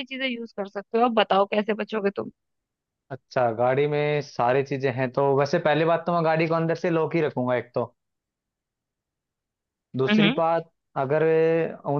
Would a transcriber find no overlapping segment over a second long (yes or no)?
yes